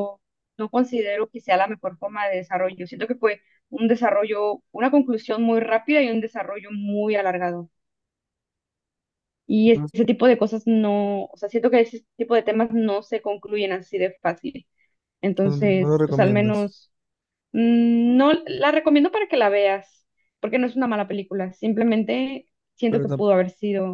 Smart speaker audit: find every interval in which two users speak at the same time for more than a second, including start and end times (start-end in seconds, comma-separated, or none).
15.4-16.7